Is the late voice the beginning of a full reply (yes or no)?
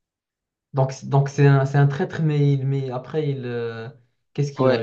yes